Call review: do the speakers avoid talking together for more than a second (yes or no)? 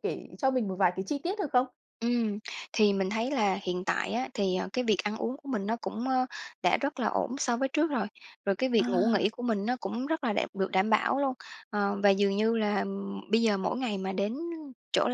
yes